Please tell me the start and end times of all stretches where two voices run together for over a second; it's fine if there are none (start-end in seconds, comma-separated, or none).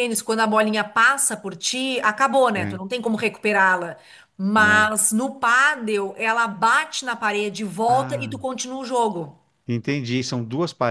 none